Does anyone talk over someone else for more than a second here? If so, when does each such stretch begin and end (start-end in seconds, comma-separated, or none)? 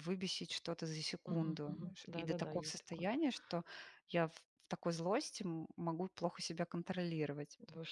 1.3-3.1